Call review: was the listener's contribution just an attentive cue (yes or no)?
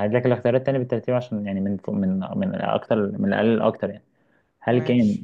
yes